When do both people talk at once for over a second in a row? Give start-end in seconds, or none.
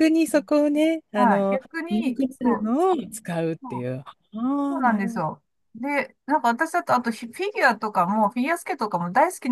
1.1-2.7